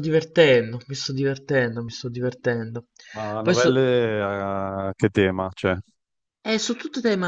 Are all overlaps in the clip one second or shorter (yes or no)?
yes